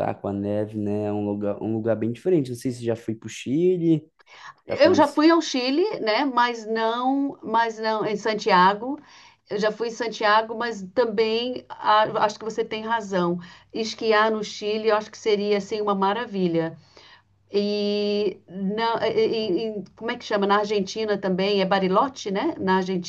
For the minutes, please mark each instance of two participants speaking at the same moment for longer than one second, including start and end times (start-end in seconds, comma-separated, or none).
none